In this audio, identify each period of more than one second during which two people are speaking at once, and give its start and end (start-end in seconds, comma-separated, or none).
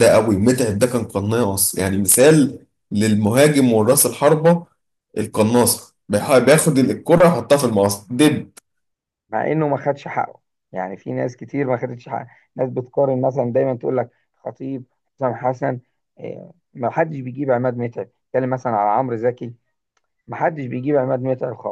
none